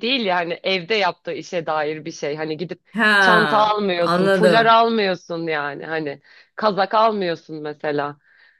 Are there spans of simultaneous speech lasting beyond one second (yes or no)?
yes